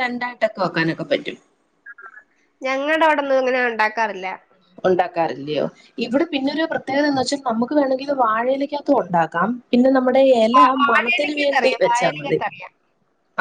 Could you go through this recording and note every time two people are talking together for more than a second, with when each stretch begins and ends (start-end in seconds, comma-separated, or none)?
10.6-12.4